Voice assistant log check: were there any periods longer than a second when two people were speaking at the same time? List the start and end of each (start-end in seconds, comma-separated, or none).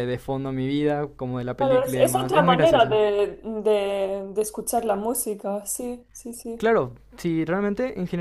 1.6-3.0